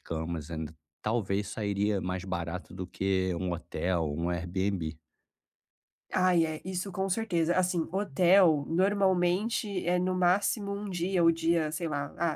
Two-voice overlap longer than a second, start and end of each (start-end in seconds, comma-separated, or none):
none